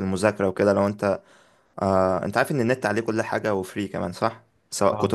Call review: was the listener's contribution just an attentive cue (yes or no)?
yes